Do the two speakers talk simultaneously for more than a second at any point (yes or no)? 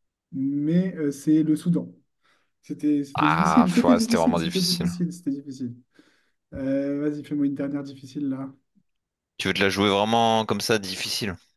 yes